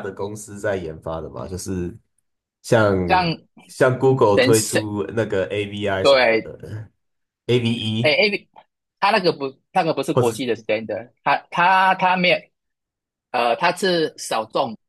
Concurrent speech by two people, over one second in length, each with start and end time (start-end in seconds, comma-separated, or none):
none